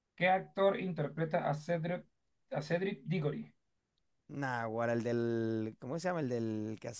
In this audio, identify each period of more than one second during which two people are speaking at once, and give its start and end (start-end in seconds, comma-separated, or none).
none